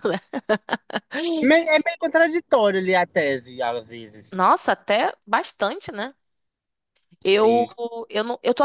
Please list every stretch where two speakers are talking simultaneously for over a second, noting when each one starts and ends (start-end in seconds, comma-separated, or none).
none